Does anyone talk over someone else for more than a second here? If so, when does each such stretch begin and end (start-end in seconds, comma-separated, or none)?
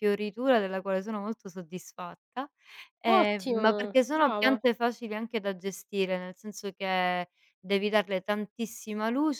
3.1-4.6